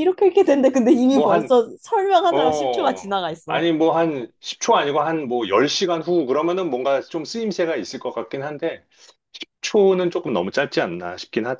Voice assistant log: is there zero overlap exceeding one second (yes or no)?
no